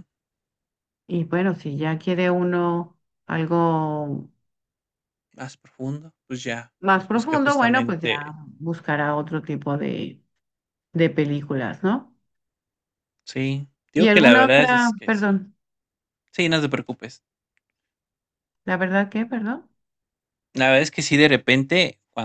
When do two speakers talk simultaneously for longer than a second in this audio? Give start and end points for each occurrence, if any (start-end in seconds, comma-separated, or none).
6.8-8.3, 13.9-15.4